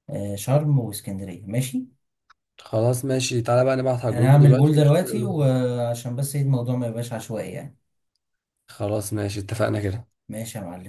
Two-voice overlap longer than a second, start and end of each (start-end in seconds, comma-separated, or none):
4.1-5.6